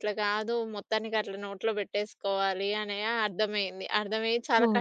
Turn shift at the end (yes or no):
no